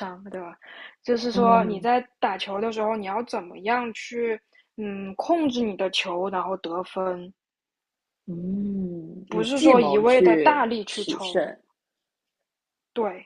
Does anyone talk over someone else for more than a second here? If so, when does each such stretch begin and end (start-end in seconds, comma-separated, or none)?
9.3-11.3